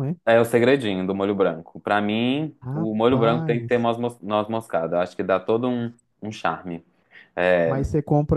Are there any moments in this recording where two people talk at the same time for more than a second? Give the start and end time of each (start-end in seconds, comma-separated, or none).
2.6-3.9